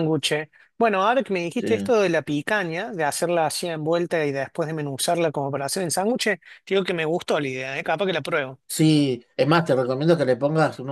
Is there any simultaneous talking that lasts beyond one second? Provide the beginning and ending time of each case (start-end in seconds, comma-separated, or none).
none